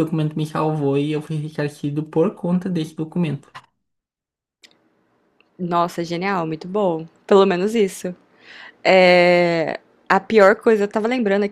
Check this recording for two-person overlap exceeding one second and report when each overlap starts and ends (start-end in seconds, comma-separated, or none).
none